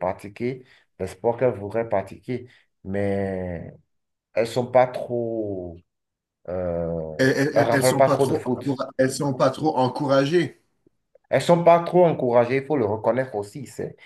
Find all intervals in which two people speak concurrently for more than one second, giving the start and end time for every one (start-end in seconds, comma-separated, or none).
7.5-8.8